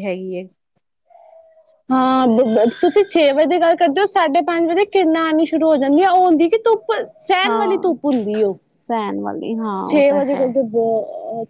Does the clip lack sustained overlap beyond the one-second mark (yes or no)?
yes